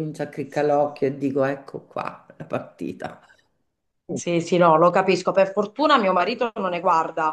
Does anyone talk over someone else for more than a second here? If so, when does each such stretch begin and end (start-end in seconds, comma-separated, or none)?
none